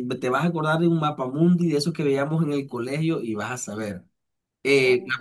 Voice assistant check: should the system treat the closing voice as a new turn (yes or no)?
no